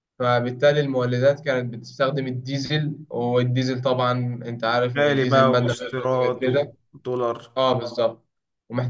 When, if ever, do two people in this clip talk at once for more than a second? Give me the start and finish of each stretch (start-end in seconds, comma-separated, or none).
5.0-6.5